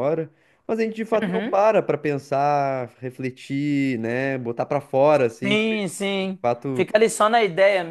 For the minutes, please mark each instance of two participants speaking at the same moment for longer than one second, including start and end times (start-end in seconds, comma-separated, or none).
5.4-6.9